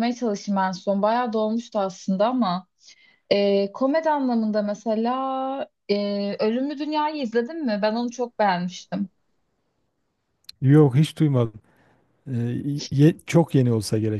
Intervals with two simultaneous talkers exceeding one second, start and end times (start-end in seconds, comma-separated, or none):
none